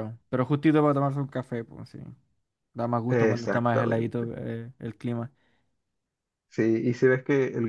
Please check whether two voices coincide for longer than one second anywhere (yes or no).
yes